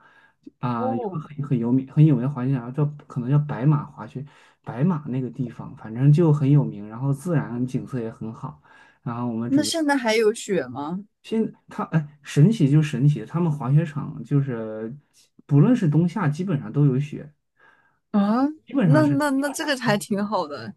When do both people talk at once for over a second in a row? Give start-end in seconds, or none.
none